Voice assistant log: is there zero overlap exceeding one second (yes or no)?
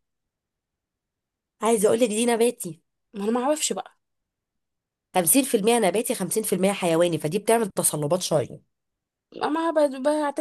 yes